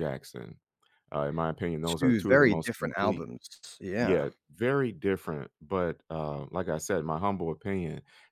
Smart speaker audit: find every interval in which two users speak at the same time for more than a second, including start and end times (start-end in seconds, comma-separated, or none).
2.0-3.3